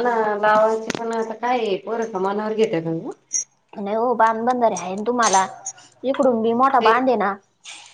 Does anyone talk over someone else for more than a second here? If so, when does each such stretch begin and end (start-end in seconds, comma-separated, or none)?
none